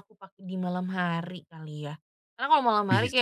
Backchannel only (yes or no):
yes